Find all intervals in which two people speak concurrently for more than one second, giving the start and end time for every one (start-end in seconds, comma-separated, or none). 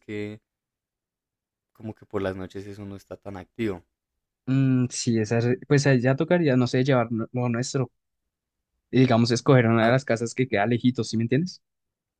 none